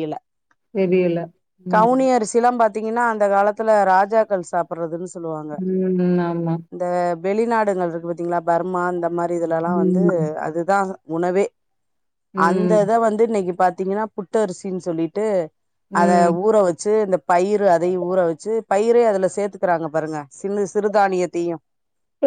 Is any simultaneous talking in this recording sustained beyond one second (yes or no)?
no